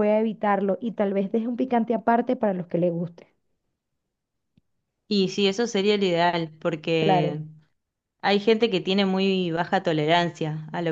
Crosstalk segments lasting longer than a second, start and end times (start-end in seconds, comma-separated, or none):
none